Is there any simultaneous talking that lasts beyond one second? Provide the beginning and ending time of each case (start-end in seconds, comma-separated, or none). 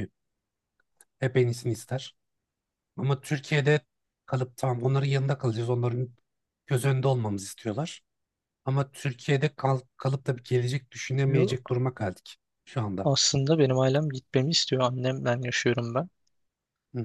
none